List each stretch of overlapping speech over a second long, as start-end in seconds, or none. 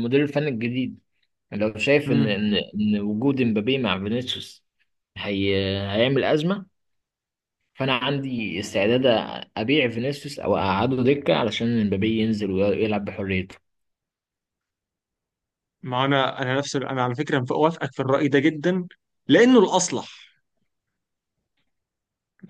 none